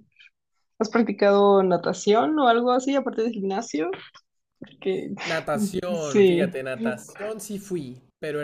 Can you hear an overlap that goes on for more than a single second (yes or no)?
no